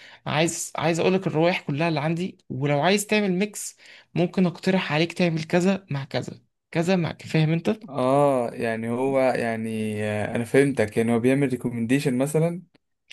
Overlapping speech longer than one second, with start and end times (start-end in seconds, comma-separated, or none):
none